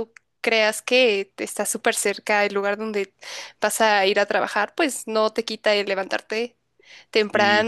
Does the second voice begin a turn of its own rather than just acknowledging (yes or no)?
no